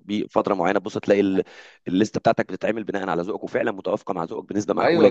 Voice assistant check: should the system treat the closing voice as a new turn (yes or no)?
yes